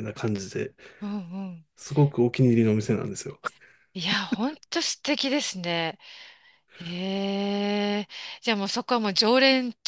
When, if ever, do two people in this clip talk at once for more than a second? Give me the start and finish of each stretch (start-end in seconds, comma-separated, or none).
none